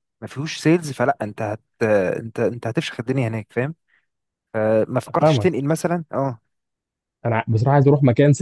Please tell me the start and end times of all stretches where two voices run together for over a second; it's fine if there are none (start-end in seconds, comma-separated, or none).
none